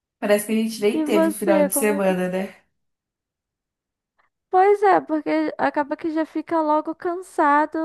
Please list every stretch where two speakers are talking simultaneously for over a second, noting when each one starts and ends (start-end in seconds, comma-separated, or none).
0.9-2.1